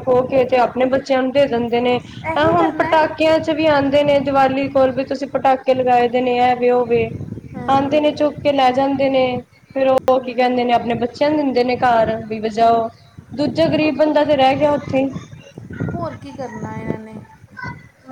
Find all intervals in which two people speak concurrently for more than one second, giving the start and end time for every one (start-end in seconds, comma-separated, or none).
none